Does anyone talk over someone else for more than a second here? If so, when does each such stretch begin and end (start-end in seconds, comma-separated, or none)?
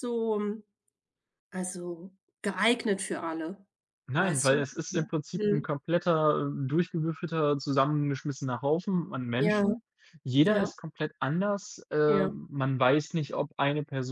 4.2-5.7